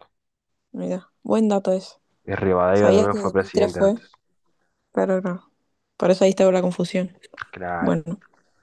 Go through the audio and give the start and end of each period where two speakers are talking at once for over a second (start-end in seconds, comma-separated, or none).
2.7-4.0